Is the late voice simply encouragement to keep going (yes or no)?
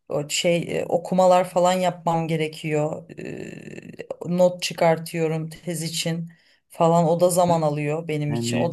yes